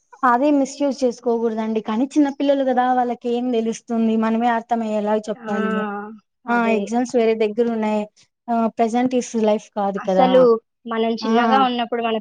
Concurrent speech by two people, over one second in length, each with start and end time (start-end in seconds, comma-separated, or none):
none